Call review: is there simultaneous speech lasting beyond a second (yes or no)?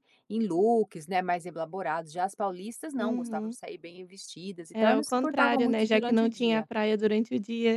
yes